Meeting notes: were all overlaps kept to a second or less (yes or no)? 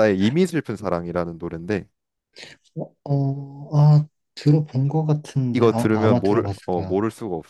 no